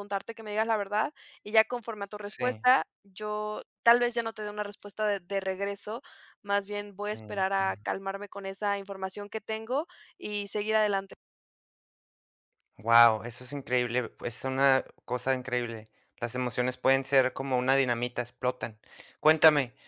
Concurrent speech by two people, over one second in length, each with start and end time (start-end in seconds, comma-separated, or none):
none